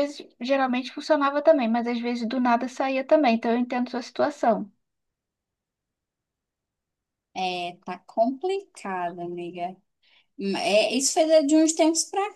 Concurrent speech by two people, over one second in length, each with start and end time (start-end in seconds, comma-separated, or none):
none